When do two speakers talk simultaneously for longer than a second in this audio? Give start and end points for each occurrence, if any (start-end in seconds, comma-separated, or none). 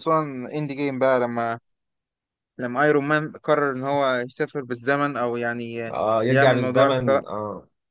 5.9-7.3